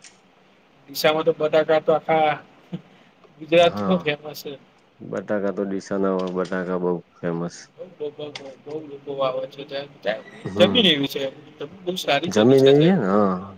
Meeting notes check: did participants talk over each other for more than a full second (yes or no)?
no